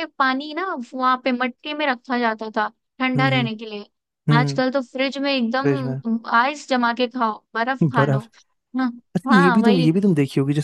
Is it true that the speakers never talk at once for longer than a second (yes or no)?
yes